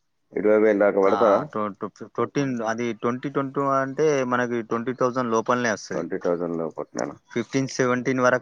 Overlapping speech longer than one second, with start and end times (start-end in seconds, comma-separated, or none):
none